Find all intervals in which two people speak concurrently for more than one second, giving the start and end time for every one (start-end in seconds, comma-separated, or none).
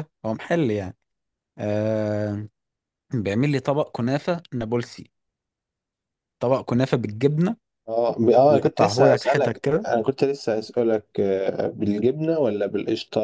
8.5-9.9